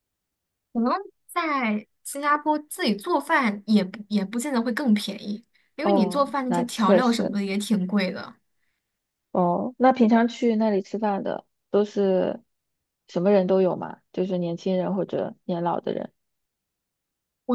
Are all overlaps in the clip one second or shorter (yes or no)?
no